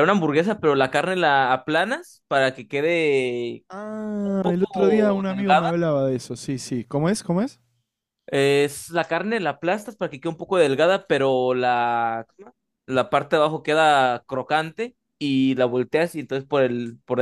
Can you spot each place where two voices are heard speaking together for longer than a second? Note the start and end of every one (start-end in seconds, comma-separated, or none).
4.2-5.7